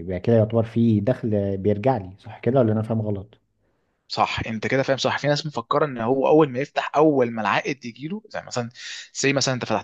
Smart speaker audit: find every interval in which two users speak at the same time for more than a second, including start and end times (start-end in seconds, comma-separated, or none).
none